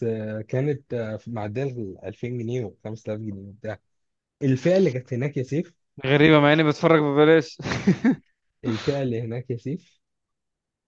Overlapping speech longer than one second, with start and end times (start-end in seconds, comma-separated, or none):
none